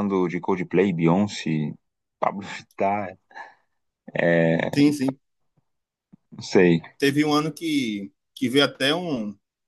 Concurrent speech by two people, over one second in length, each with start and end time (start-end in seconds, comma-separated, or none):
none